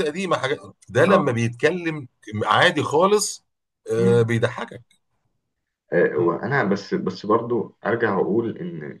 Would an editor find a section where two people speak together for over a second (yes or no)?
no